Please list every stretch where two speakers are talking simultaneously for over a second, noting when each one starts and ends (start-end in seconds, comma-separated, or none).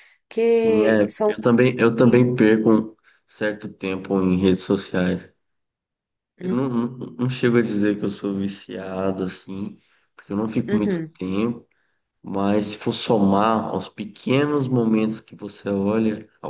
0.6-2.2